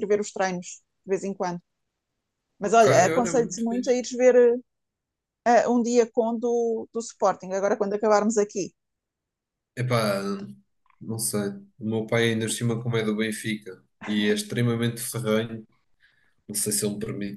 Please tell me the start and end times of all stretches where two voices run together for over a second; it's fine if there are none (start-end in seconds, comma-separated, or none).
2.6-4.0